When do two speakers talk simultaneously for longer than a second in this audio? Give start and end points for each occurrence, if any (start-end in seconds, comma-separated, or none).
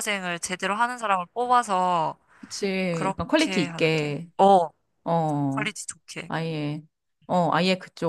2.9-4.3